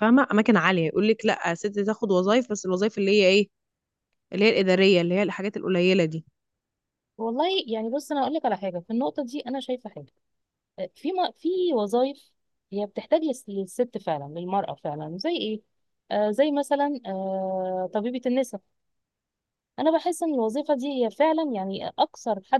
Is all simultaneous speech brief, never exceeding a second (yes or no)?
yes